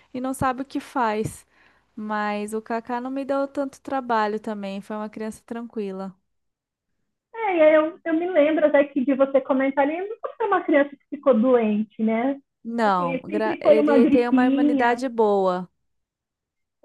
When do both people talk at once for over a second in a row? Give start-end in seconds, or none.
12.8-15.0